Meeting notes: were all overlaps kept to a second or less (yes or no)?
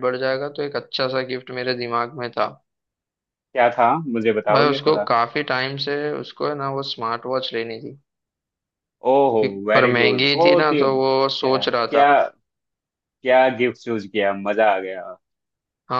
no